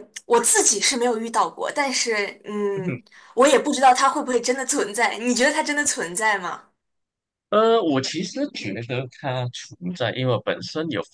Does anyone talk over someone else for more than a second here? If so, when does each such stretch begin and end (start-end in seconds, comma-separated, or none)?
none